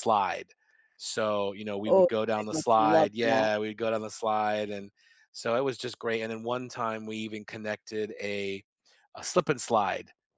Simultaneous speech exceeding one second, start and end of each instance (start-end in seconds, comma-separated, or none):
1.9-3.5